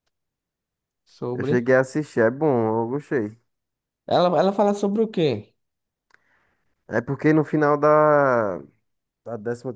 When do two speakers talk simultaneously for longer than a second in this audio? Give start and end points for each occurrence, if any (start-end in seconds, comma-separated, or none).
none